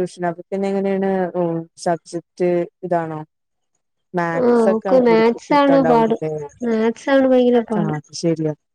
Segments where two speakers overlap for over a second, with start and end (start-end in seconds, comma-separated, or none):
4.4-6.2